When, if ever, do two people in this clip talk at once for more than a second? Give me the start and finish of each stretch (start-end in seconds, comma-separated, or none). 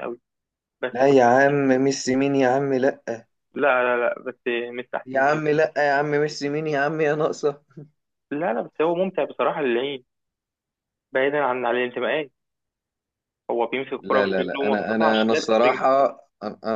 14.0-15.8